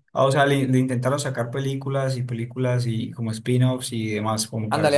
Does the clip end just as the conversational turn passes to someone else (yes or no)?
yes